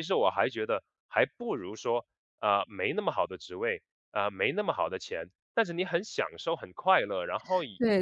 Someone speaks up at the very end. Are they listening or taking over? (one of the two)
taking over